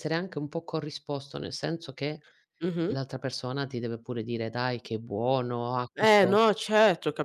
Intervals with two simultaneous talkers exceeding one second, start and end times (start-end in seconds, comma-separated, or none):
none